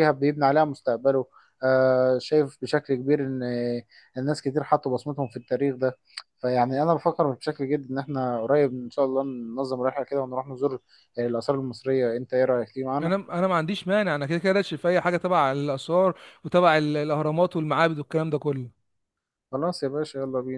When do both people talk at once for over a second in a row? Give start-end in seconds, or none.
none